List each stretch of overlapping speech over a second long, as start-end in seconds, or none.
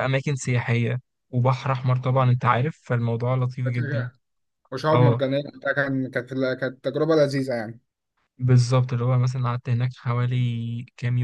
none